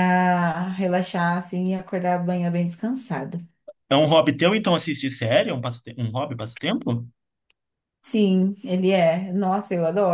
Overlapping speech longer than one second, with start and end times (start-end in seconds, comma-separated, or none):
none